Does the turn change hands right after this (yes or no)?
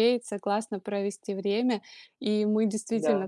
no